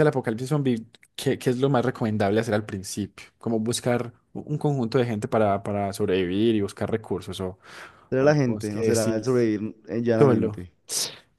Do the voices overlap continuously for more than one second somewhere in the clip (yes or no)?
yes